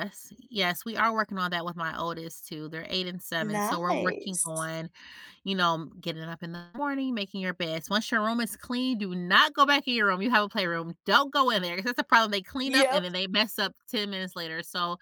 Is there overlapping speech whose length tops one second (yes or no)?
yes